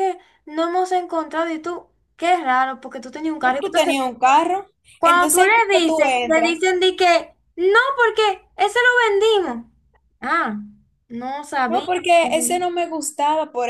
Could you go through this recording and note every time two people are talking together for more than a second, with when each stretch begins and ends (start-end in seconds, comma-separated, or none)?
5.0-6.6